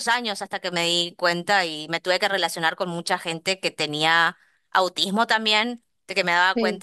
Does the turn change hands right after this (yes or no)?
no